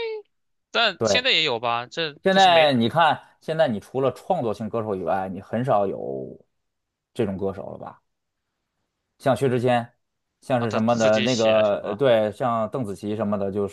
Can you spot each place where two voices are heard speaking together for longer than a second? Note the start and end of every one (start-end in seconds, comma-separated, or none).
10.6-12.0